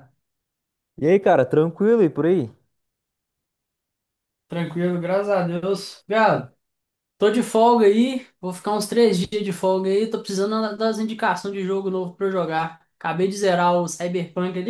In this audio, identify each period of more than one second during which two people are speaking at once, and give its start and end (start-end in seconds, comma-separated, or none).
none